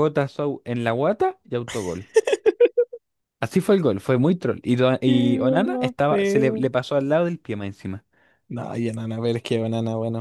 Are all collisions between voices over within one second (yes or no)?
no